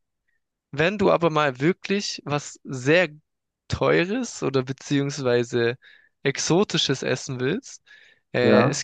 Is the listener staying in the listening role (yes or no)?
yes